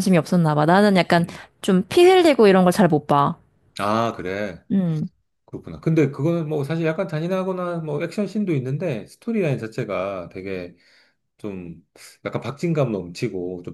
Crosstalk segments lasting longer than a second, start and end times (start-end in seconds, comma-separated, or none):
none